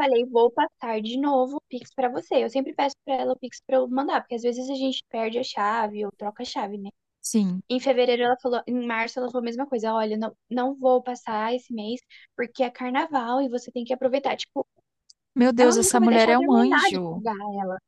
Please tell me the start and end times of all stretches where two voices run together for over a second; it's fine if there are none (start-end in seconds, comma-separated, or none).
15.6-17.2